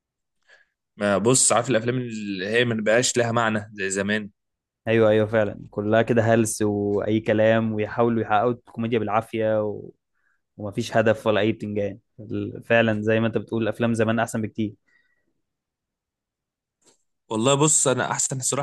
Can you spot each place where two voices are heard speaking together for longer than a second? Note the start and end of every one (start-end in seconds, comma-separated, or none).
none